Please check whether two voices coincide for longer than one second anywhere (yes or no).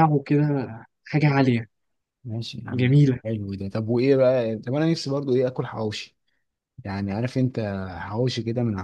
no